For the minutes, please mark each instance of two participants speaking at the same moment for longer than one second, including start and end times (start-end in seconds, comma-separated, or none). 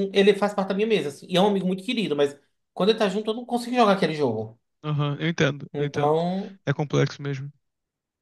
none